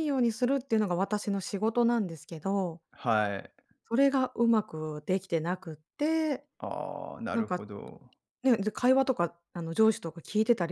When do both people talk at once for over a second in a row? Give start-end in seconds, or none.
none